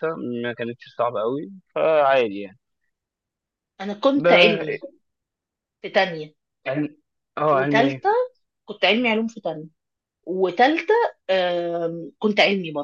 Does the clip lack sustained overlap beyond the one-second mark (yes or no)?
yes